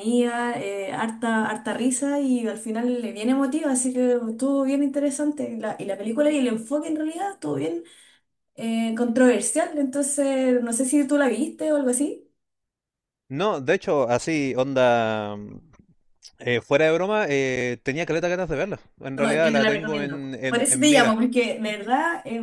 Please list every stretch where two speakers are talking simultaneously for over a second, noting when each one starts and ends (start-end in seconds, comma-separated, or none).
19.1-21.2